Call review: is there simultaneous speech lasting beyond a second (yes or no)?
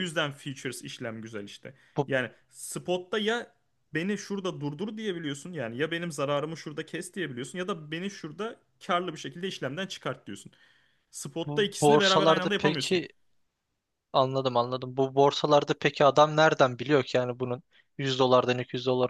yes